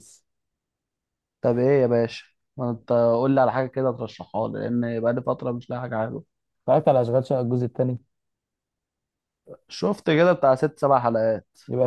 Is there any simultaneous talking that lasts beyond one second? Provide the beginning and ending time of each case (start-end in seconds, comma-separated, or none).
none